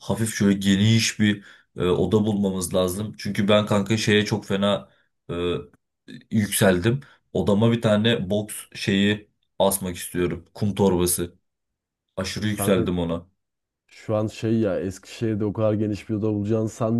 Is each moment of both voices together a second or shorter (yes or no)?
yes